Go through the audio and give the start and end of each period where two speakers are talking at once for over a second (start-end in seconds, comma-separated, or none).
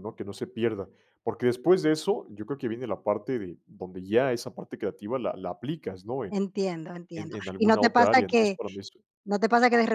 7.2-8.6